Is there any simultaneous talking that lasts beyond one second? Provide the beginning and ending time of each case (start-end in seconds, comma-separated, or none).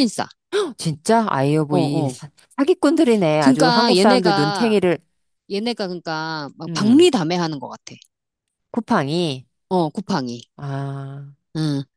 3.4-4.8